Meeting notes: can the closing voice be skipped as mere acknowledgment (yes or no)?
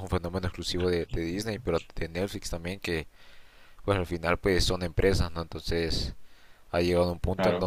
yes